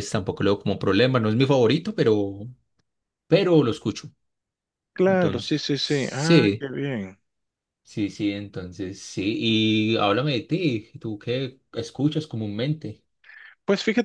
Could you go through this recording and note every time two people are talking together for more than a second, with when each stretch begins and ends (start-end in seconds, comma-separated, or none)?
5.1-6.7